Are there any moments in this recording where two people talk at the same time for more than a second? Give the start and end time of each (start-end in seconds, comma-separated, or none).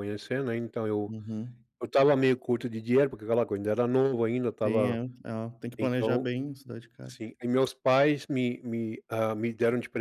none